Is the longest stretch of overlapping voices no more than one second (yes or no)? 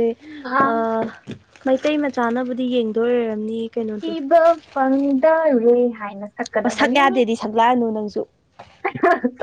yes